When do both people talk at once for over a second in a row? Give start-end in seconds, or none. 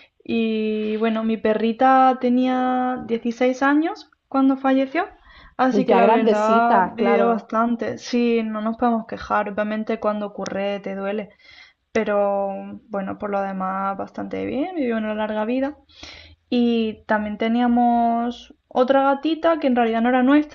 5.7-7.5